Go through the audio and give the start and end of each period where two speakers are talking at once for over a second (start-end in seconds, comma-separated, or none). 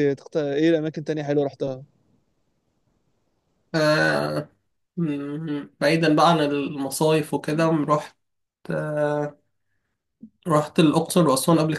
none